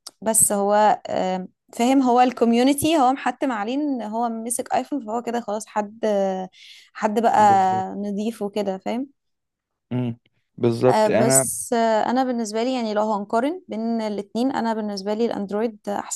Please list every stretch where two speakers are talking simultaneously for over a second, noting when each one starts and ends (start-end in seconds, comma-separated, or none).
none